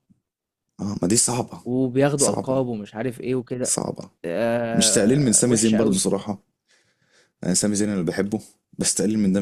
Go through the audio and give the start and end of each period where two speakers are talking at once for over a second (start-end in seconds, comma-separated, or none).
4.7-6.0